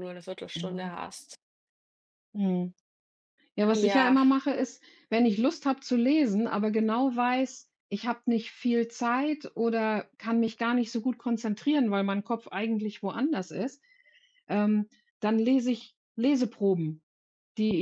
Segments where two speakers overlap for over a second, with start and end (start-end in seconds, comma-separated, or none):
none